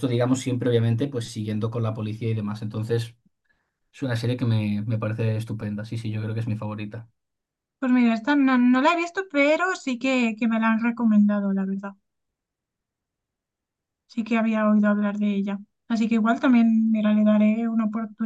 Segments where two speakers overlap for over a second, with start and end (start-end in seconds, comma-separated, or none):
none